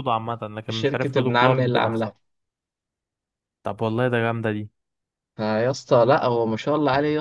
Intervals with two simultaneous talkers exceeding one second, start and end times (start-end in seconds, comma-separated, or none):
0.7-2.1